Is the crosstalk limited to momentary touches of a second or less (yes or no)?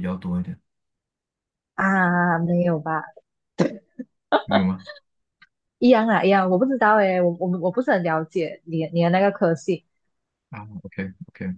yes